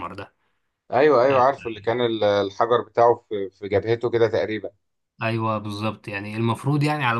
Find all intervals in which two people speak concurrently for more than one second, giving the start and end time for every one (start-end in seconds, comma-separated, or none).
none